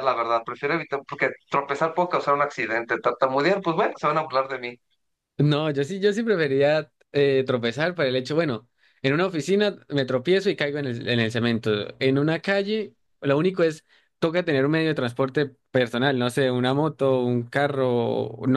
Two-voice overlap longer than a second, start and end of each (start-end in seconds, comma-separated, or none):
none